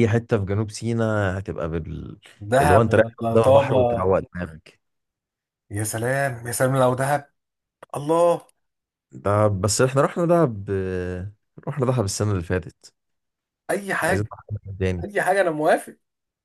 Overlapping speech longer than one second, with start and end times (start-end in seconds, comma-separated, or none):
2.6-4.1